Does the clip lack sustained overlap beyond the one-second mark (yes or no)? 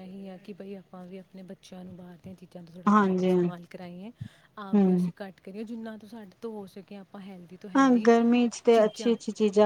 yes